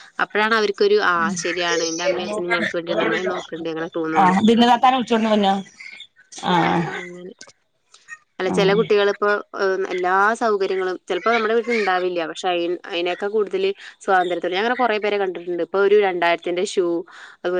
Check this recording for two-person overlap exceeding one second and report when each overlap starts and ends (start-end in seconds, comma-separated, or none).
none